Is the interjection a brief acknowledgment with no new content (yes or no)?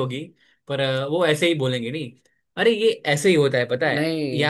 yes